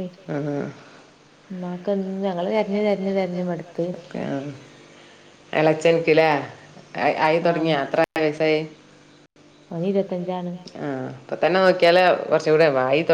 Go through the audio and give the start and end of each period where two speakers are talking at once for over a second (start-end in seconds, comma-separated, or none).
none